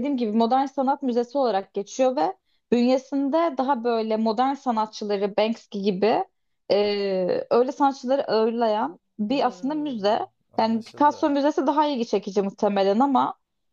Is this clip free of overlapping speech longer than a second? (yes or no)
no